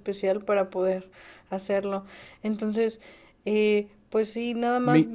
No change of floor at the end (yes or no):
yes